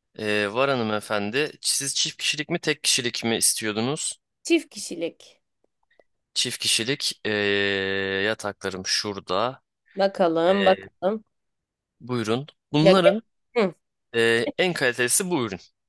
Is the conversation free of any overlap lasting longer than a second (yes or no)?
yes